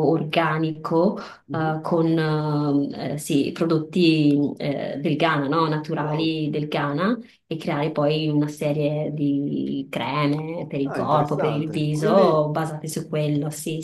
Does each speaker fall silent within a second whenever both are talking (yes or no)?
no